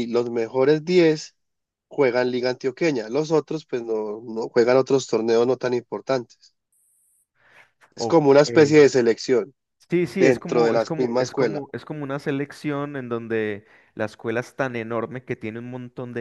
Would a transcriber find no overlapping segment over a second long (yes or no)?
no